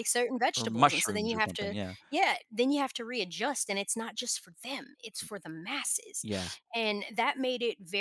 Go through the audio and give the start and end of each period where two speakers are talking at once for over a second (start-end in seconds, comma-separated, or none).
0.6-1.9